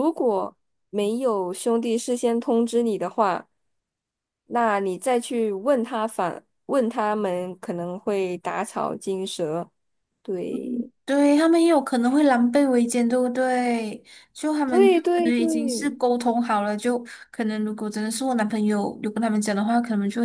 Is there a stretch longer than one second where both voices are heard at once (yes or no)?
yes